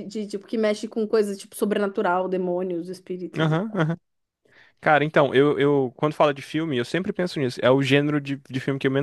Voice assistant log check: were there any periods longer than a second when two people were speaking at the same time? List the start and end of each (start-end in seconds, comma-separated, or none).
none